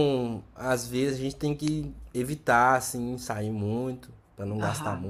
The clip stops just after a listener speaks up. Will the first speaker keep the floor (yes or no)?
no